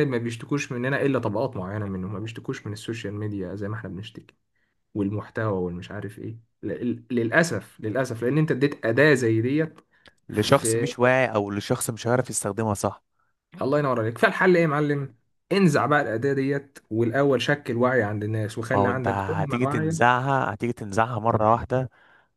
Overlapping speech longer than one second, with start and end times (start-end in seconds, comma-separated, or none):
18.7-20.1